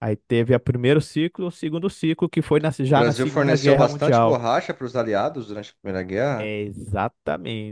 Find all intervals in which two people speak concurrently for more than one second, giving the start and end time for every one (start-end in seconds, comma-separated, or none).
2.9-4.4